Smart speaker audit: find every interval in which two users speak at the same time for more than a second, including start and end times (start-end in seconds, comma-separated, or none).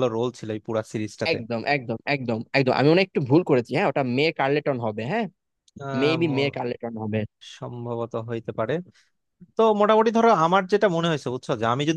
none